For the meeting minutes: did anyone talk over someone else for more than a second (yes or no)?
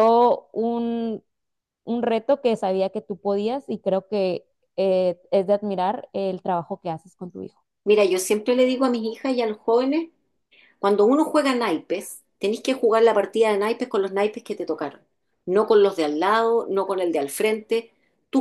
no